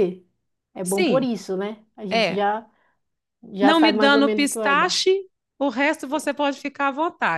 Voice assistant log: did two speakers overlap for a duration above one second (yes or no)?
yes